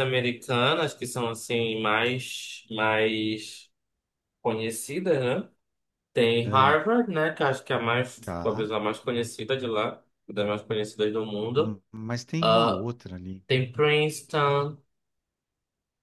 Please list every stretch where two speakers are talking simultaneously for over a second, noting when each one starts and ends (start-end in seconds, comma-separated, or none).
none